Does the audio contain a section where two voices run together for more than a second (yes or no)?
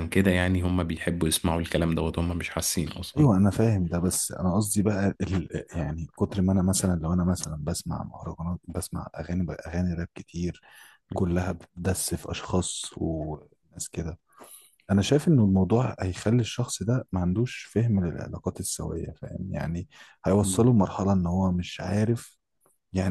no